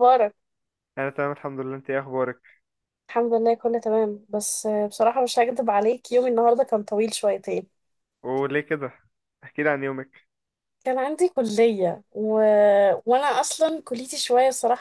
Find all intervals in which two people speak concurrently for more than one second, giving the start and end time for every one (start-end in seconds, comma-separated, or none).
none